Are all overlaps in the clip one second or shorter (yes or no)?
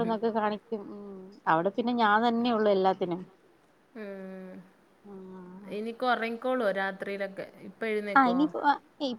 yes